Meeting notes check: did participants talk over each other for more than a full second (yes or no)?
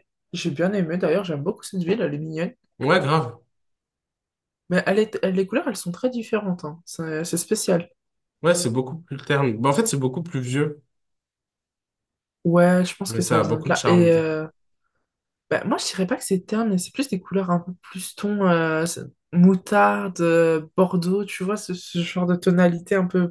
yes